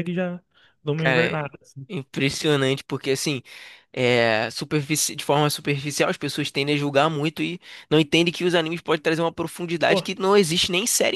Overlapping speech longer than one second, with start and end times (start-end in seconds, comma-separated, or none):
none